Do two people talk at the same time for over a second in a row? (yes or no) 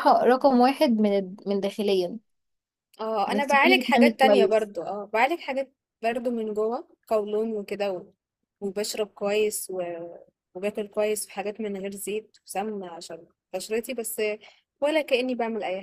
yes